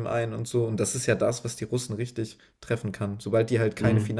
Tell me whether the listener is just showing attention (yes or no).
yes